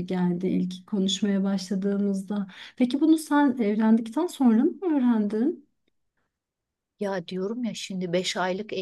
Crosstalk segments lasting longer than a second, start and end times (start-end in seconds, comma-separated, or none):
none